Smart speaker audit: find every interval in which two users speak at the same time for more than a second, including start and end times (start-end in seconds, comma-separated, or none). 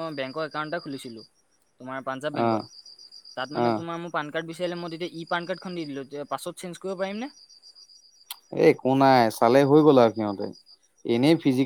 none